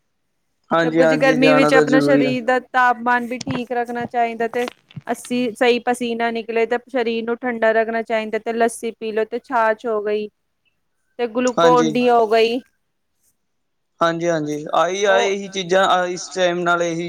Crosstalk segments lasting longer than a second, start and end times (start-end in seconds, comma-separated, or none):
0.8-2.4